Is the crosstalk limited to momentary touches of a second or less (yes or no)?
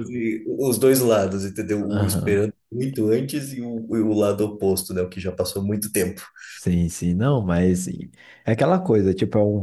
yes